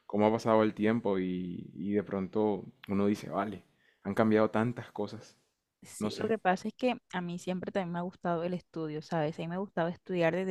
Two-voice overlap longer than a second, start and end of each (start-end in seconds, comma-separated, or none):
none